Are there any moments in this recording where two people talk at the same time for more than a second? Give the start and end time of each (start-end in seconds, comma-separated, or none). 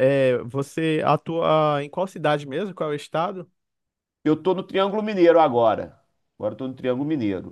none